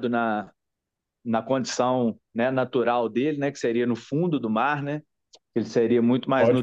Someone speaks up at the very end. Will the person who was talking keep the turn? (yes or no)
yes